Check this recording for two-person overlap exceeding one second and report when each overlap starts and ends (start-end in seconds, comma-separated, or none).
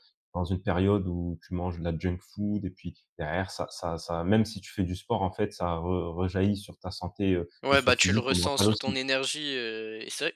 7.6-9.0